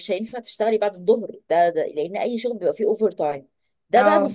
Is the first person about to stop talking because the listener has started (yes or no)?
no